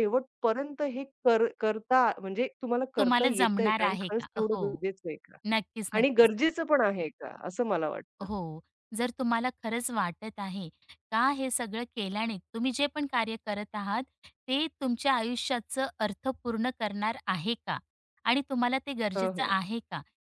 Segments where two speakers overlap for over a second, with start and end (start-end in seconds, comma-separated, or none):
3.0-4.6